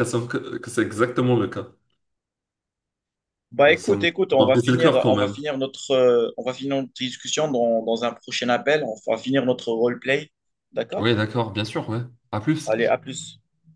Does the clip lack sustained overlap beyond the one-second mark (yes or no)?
no